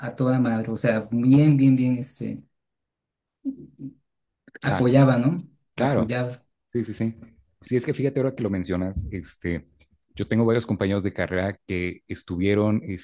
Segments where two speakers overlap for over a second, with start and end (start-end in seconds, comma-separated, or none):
none